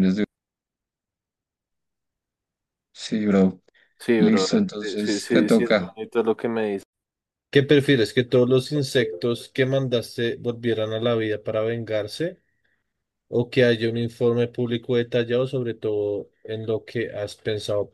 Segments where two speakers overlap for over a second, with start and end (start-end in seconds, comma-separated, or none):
4.2-6.0